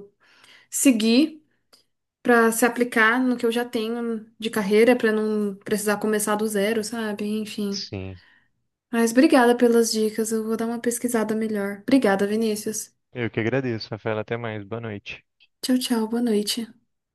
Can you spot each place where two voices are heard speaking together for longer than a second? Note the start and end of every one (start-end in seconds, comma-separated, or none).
none